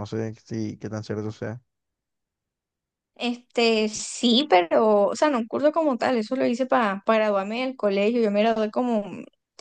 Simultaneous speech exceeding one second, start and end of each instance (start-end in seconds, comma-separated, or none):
none